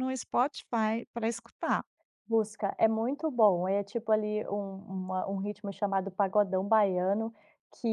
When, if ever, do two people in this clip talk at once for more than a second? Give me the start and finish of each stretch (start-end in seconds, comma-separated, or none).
none